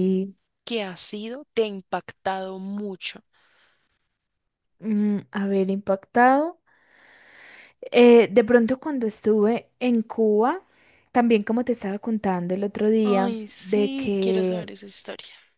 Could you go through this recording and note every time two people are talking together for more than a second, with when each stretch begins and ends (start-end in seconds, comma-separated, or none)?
13.0-14.7